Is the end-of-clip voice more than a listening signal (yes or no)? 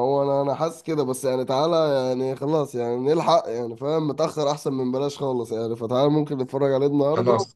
no